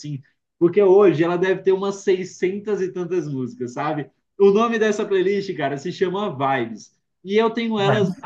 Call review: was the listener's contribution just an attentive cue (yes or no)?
yes